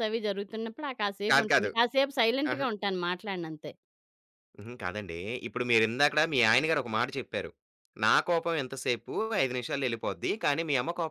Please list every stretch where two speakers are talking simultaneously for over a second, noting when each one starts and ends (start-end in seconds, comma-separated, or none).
none